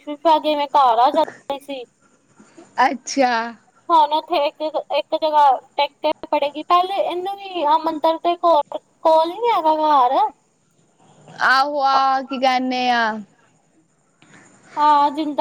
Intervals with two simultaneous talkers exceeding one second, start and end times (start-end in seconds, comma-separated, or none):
none